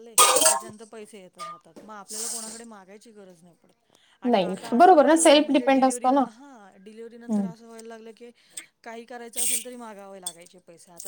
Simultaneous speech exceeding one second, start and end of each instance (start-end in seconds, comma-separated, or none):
4.3-6.2